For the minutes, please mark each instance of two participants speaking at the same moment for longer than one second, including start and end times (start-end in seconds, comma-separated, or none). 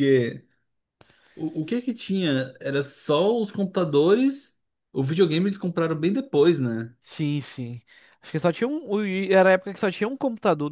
none